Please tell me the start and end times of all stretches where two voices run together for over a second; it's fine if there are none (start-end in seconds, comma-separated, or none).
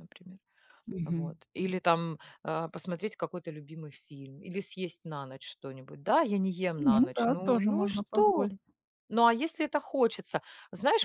6.8-8.5